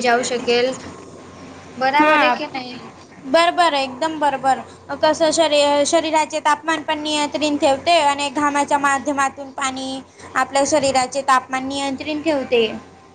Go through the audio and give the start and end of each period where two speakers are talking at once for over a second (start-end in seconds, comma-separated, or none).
none